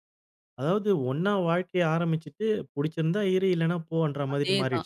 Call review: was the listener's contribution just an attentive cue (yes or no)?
no